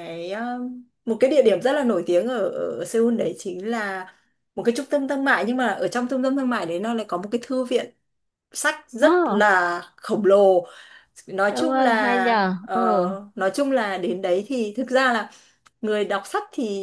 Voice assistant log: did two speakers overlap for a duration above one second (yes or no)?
yes